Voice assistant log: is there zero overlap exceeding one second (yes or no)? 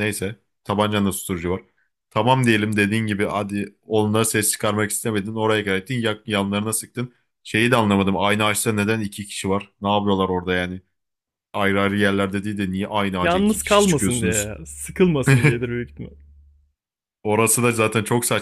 no